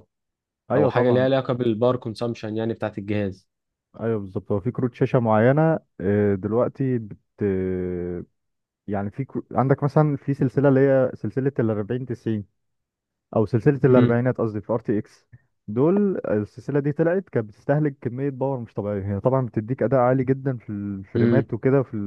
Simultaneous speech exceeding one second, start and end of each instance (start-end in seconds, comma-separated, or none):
none